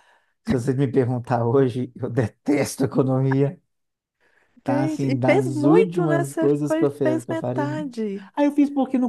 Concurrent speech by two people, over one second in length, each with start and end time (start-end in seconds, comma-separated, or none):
4.7-7.7